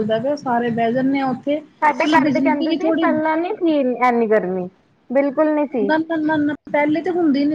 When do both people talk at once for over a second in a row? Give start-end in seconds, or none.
none